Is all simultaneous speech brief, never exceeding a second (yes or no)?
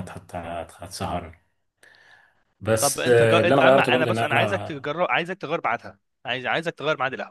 no